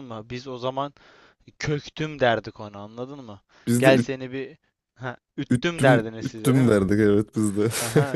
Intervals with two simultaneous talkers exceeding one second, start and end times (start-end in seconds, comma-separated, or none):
5.5-6.8